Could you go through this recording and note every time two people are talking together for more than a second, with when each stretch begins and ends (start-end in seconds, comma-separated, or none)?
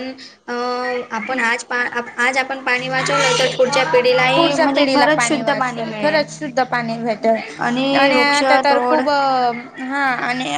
4.4-6.2